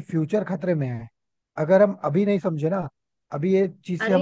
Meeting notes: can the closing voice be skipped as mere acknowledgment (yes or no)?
yes